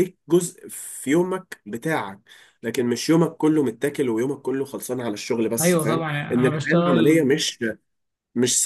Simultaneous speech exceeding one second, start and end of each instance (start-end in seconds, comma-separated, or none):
5.6-7.3